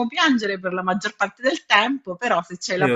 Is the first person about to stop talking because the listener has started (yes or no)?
yes